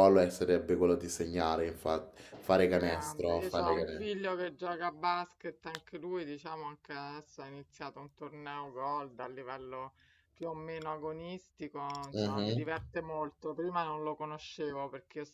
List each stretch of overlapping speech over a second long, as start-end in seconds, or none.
2.8-4.1